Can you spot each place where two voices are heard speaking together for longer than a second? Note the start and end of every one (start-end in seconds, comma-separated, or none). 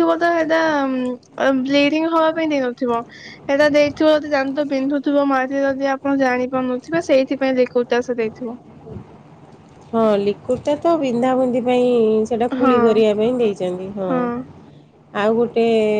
none